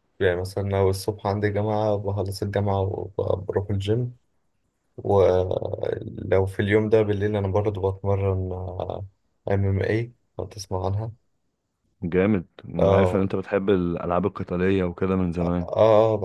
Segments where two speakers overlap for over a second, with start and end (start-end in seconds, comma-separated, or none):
none